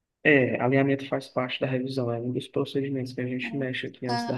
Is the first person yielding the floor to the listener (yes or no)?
yes